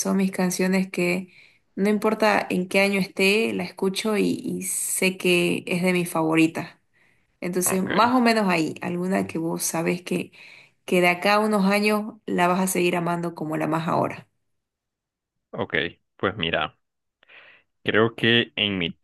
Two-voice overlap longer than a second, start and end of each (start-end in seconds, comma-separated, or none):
none